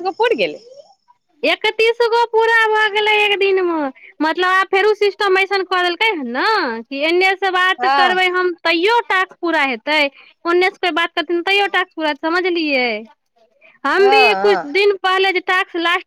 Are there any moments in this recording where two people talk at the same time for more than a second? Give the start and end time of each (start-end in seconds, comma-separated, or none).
none